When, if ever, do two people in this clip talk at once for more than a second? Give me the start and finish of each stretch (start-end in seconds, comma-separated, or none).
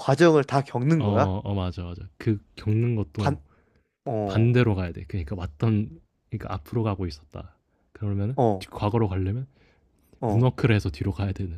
none